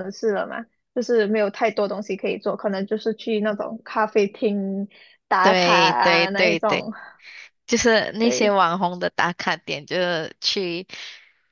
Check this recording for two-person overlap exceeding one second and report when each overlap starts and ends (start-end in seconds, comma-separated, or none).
5.4-6.9